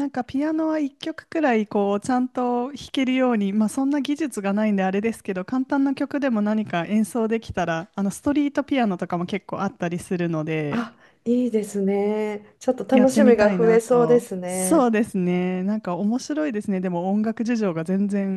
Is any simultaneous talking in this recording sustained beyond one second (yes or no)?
yes